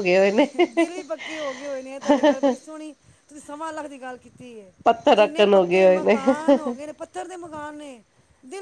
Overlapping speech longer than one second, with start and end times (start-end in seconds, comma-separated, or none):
5.2-6.7